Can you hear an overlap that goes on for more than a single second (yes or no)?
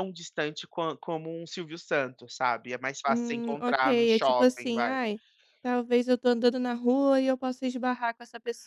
yes